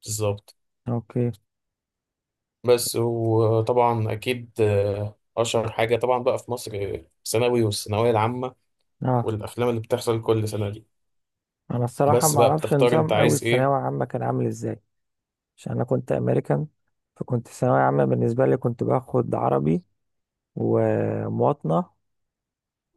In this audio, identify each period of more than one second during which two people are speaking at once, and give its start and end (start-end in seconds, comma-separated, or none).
12.1-13.7